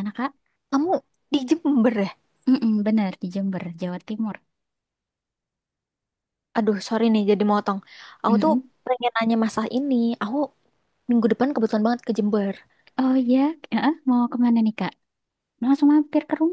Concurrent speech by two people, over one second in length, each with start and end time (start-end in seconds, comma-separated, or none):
none